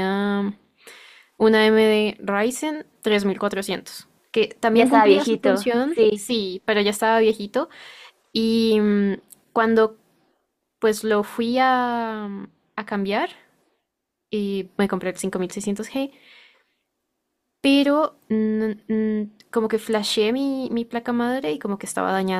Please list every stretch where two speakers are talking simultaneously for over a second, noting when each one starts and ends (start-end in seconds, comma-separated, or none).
4.7-6.3